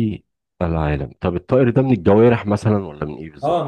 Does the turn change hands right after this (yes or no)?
yes